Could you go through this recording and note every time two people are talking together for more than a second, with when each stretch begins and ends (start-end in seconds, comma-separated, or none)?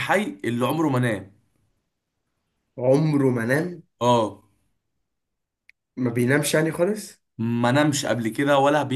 none